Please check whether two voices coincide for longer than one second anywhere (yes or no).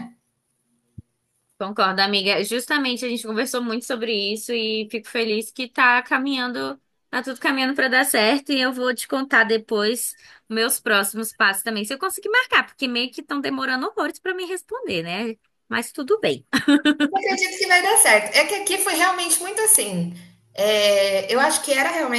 no